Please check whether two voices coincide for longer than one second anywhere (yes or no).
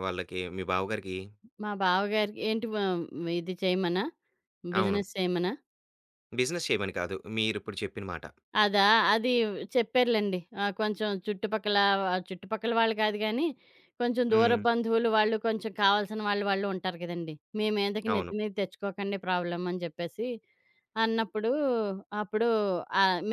no